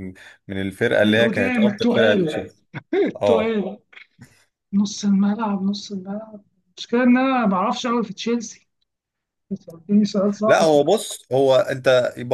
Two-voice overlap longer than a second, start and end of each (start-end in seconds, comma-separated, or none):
1.0-2.5